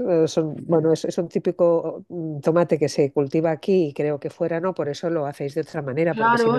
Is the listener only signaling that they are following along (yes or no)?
no